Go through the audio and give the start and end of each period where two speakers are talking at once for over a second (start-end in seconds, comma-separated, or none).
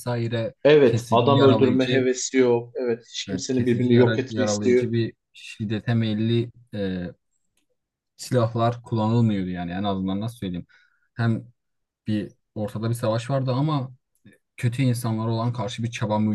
0.6-2.1, 3.3-4.9